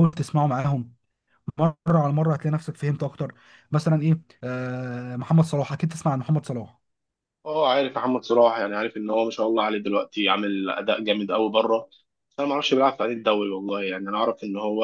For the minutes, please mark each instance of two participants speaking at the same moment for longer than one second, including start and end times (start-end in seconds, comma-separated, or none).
none